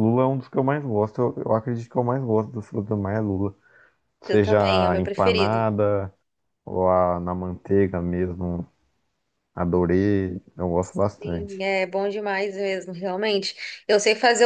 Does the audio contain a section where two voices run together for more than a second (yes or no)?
yes